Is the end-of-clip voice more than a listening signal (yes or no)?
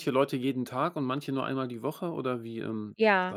yes